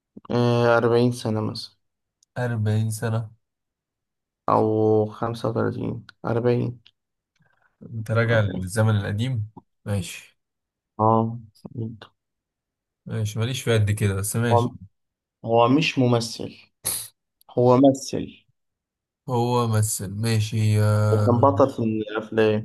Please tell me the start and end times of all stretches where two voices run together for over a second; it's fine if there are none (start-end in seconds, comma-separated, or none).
none